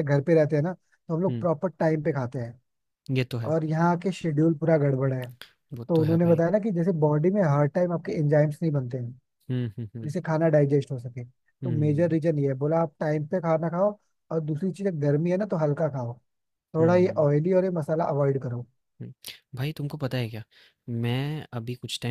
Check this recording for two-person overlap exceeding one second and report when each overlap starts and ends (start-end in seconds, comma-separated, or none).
none